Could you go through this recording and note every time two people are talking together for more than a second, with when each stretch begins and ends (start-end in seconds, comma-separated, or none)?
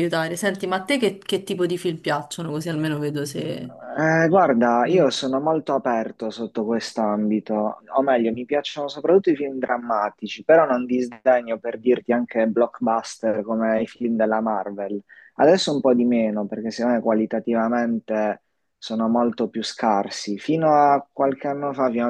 none